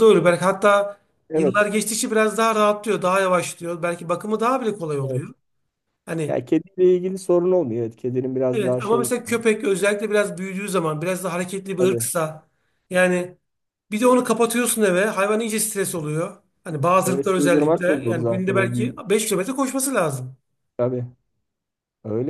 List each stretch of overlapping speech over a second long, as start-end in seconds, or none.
17.1-18.9